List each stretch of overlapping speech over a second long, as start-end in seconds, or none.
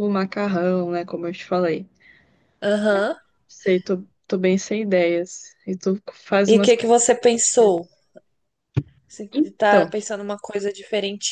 6.5-7.7